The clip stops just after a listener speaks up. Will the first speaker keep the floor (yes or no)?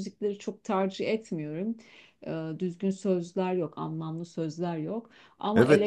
no